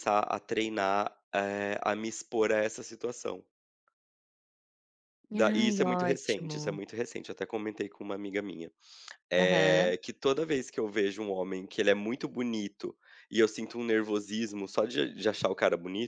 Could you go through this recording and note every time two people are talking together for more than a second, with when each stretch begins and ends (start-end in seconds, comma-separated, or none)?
5.3-6.8